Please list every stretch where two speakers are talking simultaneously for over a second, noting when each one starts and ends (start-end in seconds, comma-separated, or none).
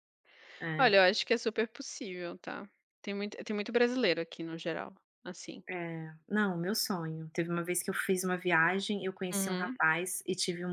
none